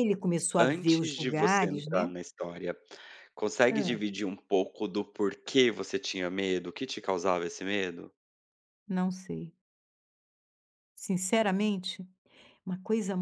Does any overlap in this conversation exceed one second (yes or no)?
yes